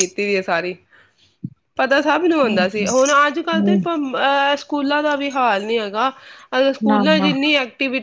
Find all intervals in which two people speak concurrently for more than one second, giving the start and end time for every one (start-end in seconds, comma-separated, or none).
2.4-3.8